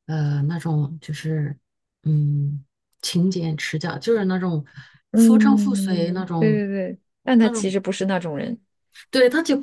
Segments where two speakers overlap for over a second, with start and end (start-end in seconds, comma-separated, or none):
5.2-6.6